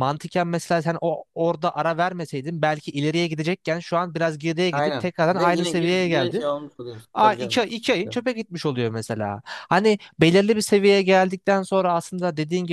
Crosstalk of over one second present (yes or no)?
yes